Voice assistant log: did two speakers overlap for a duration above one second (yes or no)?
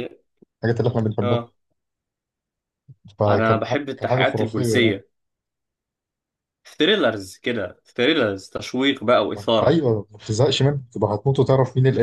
yes